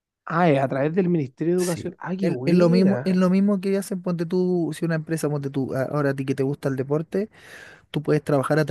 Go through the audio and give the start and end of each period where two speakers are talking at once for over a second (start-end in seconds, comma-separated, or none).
1.6-3.1